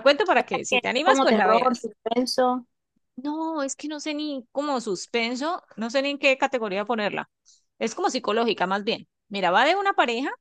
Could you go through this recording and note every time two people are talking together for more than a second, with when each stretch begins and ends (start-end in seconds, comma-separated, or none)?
0.7-1.9